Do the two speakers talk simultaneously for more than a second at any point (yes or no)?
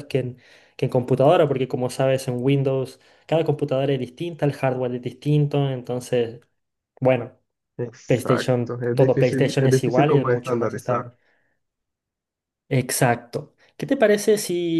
yes